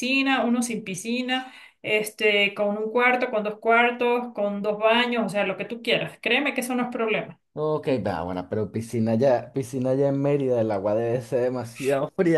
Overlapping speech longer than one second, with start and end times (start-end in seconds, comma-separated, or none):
none